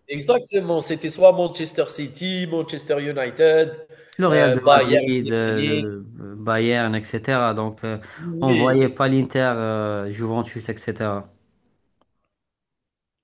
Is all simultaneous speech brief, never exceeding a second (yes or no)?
no